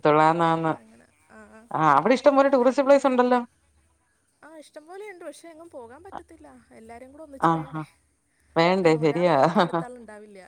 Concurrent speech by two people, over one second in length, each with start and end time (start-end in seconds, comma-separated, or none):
none